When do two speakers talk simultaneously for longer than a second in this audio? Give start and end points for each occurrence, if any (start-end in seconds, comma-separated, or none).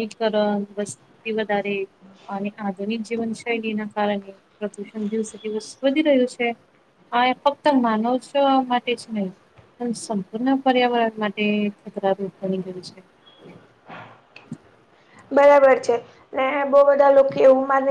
none